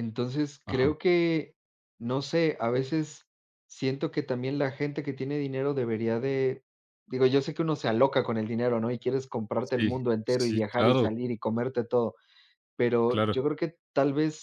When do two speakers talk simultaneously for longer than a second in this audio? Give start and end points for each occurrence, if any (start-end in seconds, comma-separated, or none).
9.6-11.1